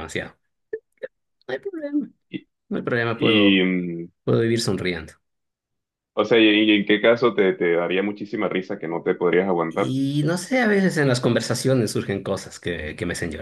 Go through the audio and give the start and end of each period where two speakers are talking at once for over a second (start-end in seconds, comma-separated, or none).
none